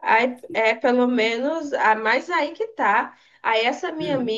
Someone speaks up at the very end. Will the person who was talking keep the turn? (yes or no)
yes